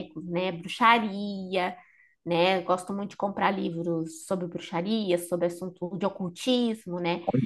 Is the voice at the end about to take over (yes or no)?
no